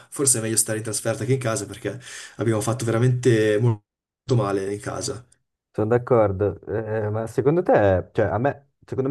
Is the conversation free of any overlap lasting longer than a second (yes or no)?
yes